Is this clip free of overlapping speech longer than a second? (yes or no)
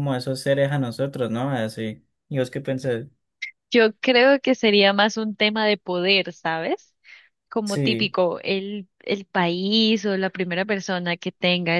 yes